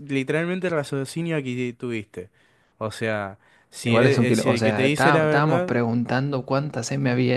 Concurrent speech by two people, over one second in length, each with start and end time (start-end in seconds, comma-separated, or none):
3.8-5.7